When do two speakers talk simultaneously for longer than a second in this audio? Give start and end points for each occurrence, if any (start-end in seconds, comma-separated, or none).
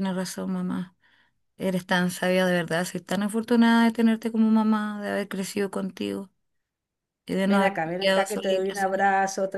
7.5-9.0